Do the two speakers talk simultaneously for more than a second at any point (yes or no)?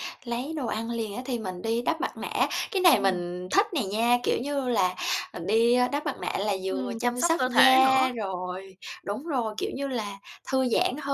yes